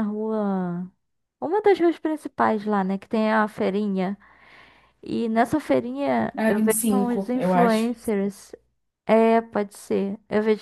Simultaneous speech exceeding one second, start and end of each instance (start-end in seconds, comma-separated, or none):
6.4-7.9